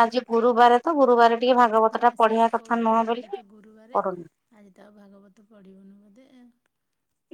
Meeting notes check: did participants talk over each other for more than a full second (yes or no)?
yes